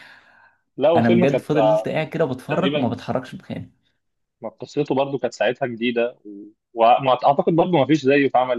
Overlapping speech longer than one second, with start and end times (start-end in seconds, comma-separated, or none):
none